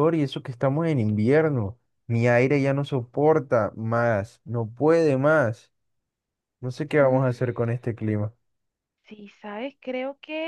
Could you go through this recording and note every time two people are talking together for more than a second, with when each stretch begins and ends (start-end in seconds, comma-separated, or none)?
none